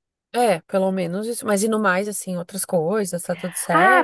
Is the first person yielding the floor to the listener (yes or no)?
yes